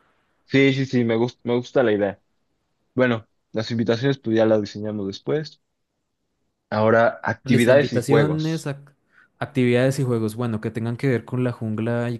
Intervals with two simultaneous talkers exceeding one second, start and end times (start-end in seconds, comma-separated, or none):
7.4-8.7